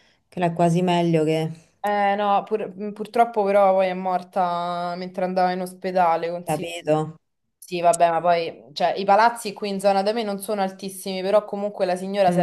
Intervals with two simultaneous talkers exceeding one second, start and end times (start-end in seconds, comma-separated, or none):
none